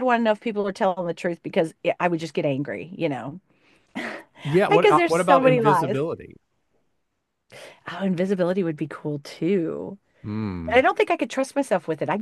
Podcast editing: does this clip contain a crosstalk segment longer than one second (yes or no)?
yes